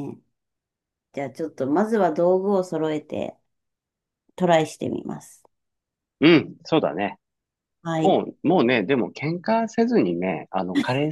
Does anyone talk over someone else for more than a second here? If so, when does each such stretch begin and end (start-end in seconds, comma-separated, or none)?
none